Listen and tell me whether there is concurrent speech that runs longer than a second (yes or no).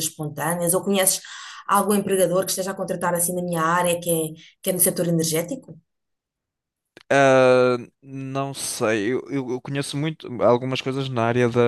no